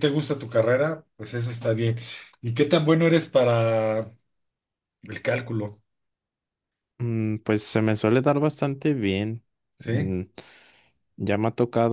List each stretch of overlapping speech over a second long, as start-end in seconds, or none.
none